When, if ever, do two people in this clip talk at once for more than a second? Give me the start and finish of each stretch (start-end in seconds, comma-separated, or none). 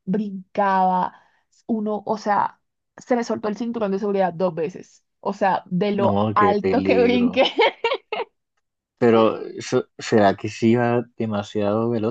6.0-7.4